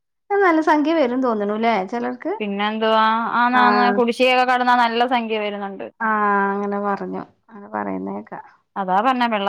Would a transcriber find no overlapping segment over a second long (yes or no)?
yes